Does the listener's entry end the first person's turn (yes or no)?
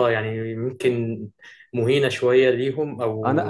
yes